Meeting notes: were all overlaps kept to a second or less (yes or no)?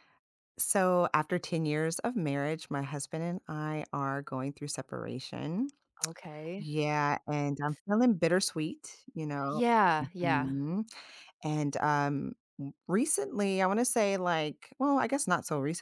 yes